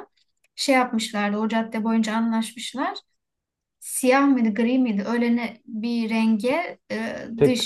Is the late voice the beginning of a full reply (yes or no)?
no